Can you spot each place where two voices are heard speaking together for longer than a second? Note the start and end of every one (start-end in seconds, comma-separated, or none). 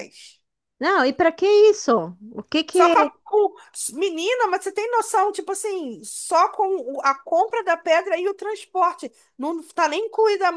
none